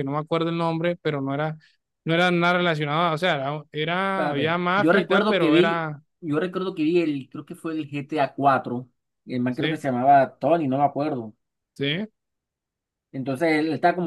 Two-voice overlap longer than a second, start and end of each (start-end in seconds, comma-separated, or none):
4.1-6.0